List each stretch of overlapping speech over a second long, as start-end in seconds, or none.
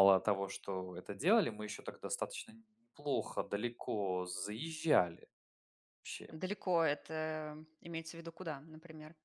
none